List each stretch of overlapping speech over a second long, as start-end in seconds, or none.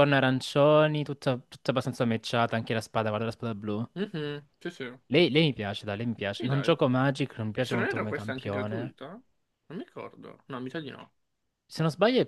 7.5-8.9